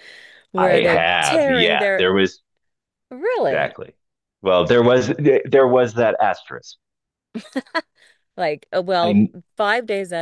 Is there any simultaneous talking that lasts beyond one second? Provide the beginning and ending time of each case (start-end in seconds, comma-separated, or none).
0.6-2.0